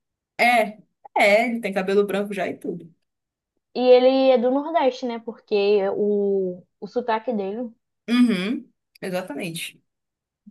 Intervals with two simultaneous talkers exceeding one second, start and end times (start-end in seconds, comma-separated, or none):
none